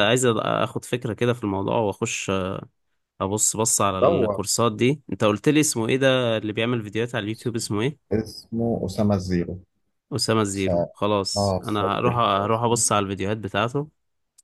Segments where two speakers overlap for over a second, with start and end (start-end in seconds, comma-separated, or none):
11.4-12.8